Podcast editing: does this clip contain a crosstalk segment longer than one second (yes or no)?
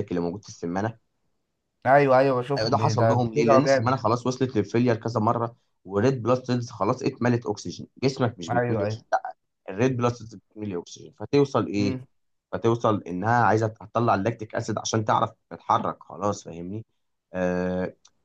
yes